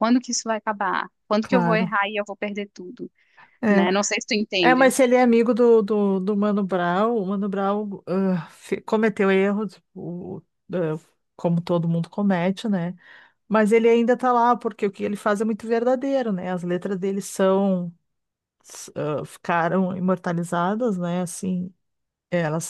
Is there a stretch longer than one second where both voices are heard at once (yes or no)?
no